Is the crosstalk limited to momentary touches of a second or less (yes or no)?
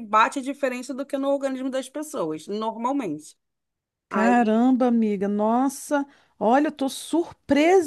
yes